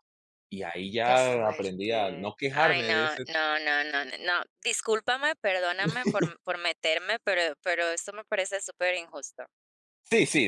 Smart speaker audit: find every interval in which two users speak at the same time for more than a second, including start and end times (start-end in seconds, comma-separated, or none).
1.0-3.2